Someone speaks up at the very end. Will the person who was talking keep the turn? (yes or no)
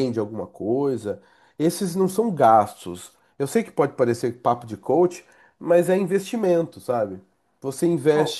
yes